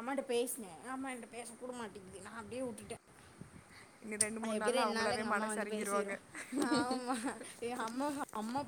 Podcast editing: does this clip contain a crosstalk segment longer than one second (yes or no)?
yes